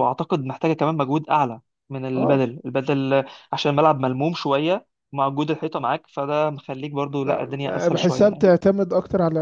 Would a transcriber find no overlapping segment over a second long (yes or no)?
no